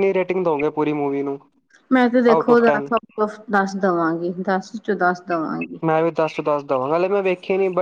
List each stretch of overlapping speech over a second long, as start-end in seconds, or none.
none